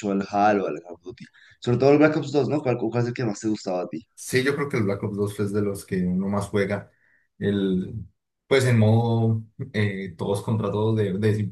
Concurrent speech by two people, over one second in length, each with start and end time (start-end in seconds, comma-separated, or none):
none